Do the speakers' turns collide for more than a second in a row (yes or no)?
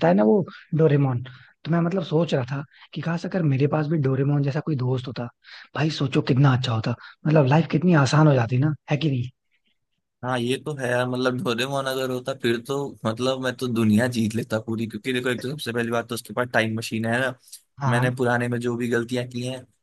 no